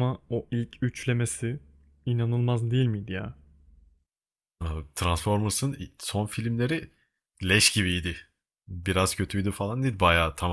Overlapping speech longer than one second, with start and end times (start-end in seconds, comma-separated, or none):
none